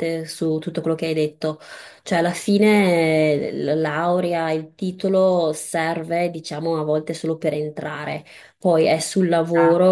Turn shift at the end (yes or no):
no